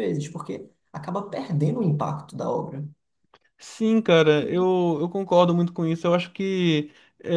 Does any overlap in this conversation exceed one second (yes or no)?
no